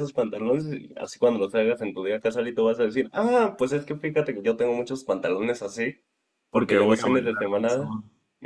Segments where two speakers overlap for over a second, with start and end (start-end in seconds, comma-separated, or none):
6.5-7.9